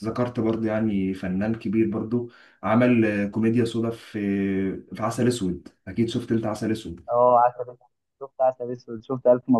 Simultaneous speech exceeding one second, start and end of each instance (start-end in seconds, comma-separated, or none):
none